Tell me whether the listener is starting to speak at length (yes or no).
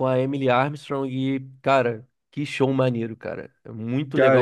yes